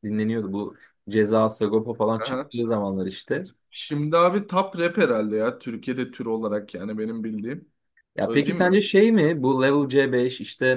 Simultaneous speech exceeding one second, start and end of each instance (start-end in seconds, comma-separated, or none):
none